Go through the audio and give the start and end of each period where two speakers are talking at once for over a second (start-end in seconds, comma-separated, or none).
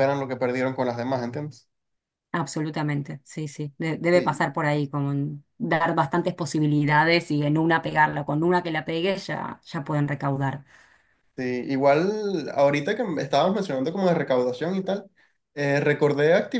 none